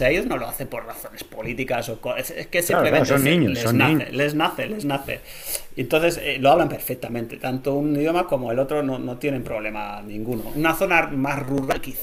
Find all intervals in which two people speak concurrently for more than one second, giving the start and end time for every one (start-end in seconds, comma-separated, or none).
2.7-4.3